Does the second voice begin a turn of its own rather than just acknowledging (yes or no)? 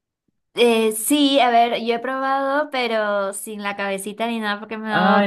yes